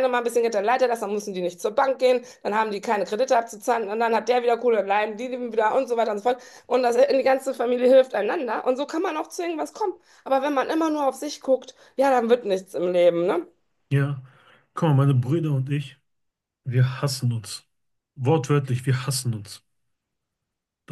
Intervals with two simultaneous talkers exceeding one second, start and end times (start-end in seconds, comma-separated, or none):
none